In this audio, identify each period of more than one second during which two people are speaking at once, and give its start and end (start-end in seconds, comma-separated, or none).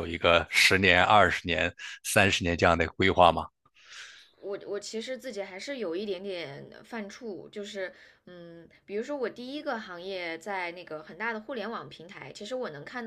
none